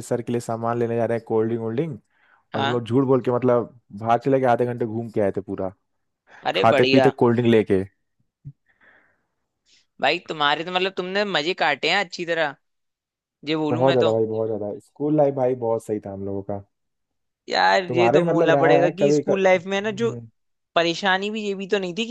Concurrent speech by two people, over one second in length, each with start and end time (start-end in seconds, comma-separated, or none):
17.9-20.1